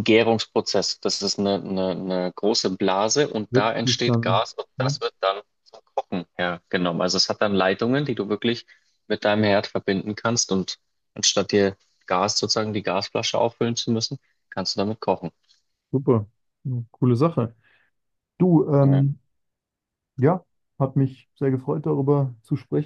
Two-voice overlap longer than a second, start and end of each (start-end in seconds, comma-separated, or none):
3.5-5.0